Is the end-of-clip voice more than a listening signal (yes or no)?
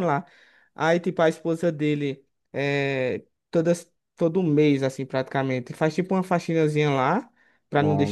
no